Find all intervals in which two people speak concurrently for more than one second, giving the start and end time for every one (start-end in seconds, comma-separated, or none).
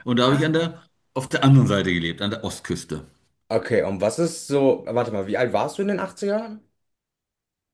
none